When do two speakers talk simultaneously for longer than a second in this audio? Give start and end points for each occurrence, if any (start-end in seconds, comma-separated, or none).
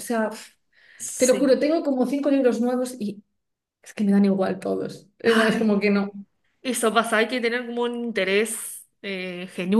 none